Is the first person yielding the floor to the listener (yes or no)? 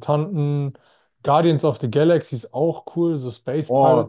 yes